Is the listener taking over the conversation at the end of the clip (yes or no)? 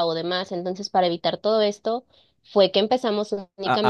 yes